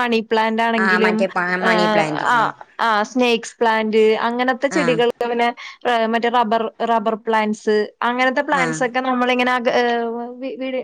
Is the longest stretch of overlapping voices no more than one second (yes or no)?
yes